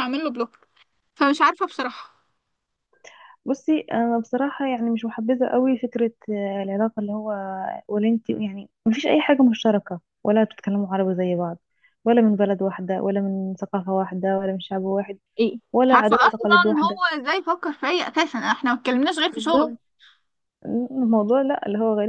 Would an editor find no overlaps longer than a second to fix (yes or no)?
no